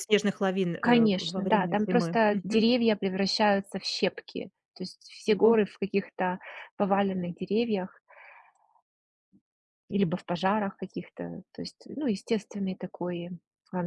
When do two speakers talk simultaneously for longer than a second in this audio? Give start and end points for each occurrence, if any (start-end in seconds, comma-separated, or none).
0.8-2.2